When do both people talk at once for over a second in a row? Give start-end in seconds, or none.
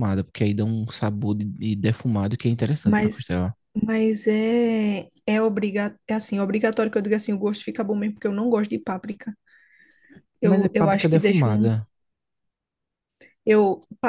10.4-11.7